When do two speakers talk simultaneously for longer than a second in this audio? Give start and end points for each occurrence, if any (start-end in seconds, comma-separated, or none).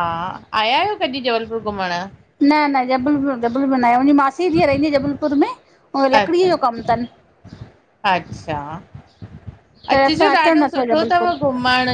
9.9-11.3